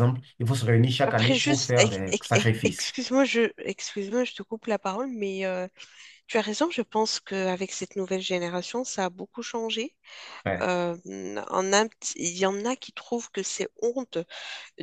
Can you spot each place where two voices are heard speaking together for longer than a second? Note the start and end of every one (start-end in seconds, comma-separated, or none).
1.1-3.0